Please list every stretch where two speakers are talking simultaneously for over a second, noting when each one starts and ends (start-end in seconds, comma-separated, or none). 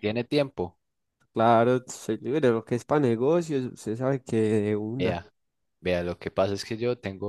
none